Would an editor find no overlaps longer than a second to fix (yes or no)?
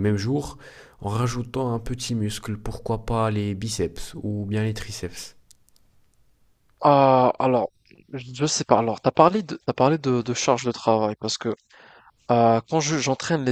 yes